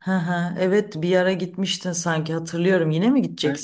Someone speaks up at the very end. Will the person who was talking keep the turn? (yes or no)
no